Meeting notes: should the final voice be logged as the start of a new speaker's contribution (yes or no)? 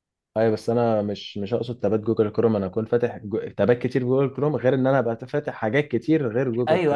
yes